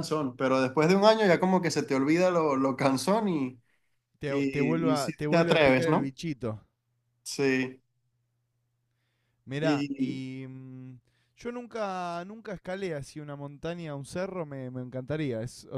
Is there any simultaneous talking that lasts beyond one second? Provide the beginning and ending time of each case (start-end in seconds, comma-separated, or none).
4.3-6.1